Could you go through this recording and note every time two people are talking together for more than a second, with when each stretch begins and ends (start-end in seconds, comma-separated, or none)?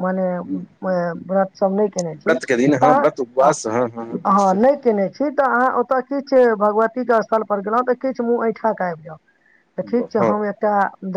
none